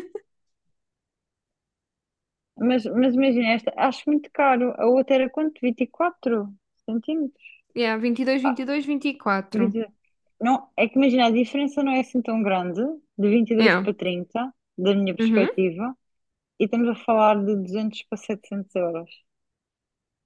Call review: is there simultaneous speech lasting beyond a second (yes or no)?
no